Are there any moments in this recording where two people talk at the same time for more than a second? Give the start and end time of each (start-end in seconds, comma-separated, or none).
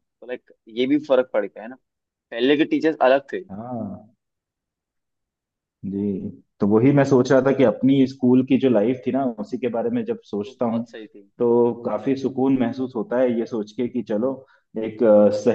none